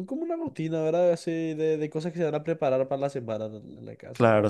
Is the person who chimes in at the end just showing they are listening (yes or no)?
yes